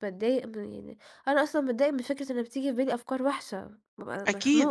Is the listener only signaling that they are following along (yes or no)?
no